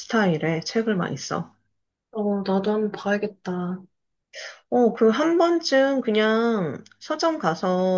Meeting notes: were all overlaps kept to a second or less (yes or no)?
yes